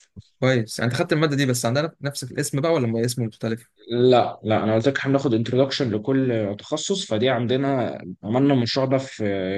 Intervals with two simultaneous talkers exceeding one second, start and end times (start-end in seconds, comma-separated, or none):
none